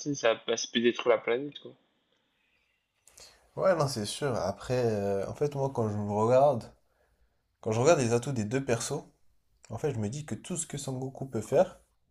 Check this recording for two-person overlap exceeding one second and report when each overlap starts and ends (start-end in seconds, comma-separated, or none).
none